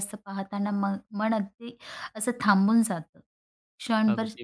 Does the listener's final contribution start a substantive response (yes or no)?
no